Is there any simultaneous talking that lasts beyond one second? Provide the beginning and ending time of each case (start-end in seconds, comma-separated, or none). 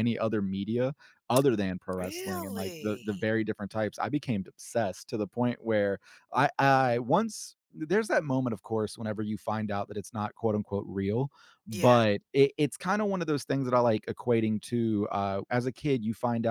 2.0-3.3